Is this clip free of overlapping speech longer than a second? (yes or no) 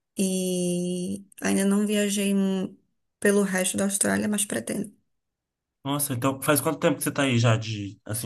yes